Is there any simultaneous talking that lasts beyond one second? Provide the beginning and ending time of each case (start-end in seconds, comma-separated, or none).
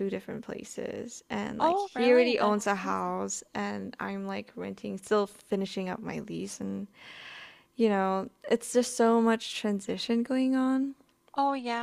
1.6-3.1